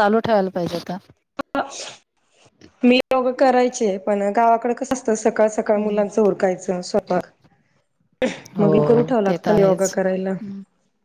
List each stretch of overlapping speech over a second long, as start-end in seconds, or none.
8.6-10.4